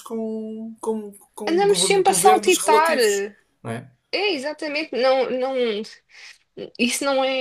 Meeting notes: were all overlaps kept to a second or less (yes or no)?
no